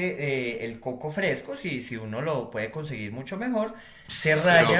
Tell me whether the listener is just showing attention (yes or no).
yes